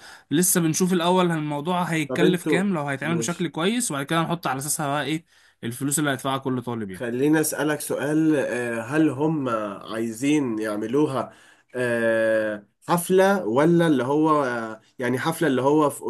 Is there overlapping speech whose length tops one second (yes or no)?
yes